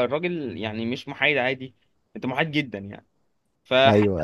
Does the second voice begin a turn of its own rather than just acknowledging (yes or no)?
no